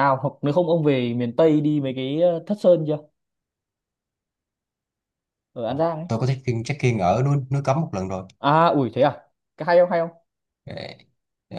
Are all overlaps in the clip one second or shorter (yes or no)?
yes